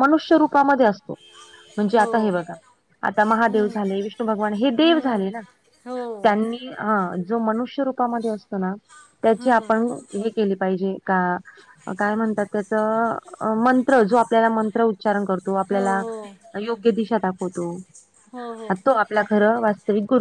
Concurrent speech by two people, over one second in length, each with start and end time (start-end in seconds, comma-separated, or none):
none